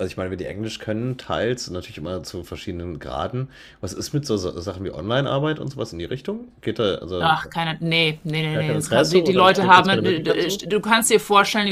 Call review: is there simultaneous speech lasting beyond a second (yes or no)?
yes